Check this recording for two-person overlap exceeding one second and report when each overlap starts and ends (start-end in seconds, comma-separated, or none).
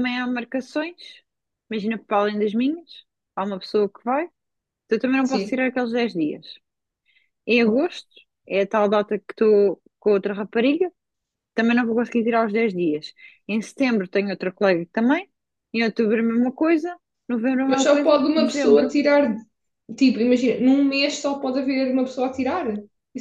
17.7-18.9